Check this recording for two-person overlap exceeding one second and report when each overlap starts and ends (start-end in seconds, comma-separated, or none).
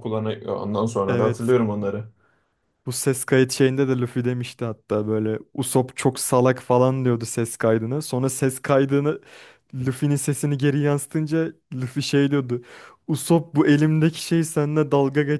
none